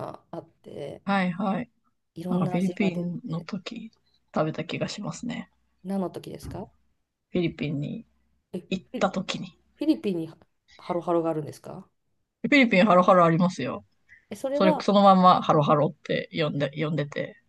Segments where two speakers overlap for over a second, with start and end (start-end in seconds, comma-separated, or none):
2.3-3.5